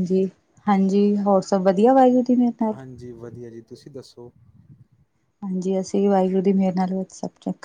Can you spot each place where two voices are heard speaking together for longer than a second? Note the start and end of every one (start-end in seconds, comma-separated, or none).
none